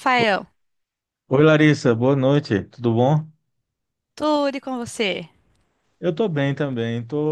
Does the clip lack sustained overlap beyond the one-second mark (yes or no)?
yes